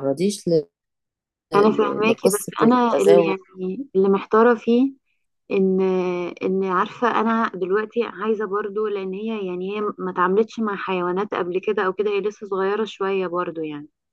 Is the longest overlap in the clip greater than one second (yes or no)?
yes